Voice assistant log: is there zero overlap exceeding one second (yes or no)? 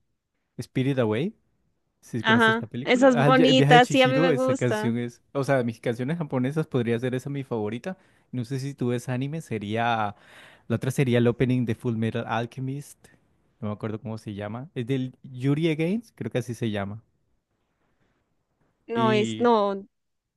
no